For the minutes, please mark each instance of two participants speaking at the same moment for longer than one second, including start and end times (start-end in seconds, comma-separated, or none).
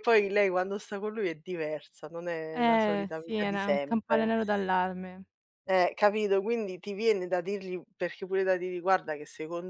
2.5-4.3